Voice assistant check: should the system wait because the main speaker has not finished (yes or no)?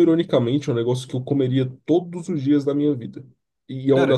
yes